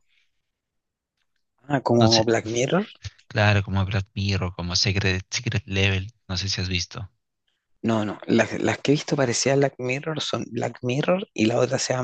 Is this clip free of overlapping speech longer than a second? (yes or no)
yes